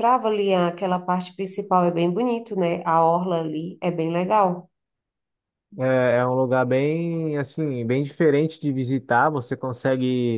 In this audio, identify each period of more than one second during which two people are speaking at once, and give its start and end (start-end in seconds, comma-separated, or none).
none